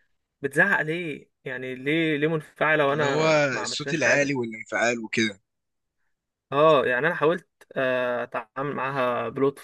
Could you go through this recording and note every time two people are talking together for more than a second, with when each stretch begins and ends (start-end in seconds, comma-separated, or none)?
2.9-4.4